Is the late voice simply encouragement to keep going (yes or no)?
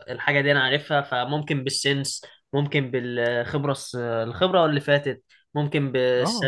yes